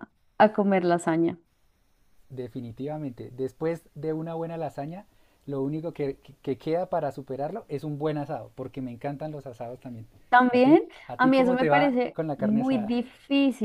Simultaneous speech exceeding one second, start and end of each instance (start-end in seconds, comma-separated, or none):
10.5-12.9